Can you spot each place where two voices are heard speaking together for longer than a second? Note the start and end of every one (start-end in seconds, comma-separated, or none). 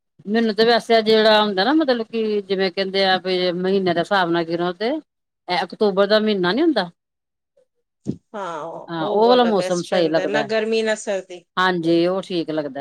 8.9-10.5